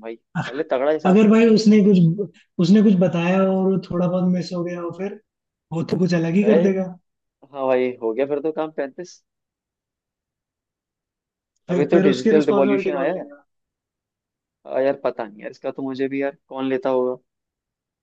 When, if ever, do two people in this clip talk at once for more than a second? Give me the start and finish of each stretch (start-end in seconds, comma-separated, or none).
11.7-13.3